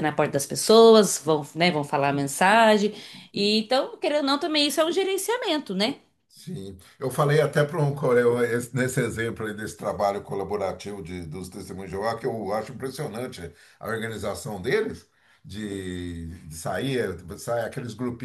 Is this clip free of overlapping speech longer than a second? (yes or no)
yes